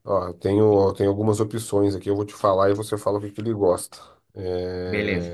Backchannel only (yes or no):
yes